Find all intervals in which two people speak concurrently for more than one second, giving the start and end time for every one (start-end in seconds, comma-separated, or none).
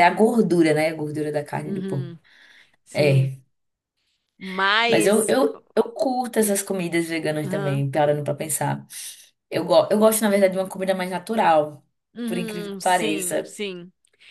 12.2-13.6